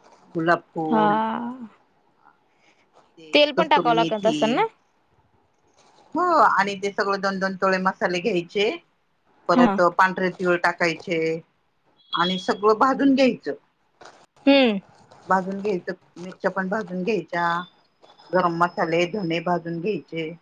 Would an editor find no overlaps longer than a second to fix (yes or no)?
no